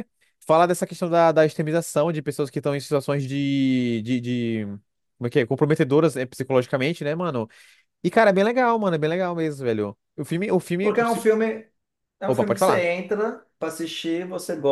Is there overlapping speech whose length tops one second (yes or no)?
no